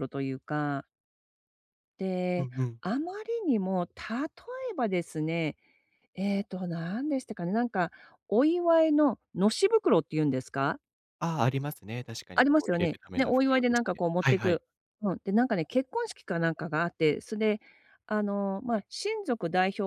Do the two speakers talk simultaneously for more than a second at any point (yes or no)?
yes